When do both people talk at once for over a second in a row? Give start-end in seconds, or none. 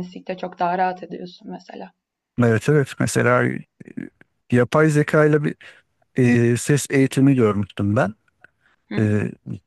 none